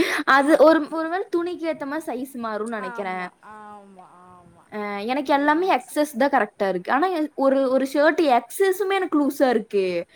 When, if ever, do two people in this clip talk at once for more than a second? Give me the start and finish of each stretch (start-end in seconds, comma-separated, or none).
none